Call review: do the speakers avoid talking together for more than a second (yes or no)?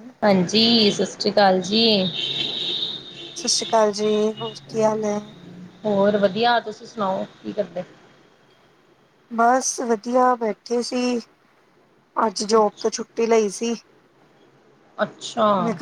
yes